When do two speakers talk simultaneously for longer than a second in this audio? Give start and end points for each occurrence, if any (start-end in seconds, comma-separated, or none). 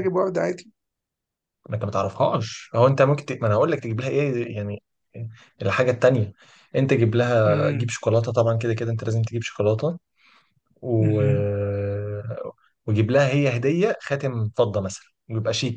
none